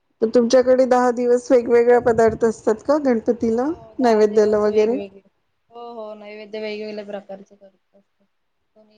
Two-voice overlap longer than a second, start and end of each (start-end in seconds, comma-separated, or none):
3.5-5.0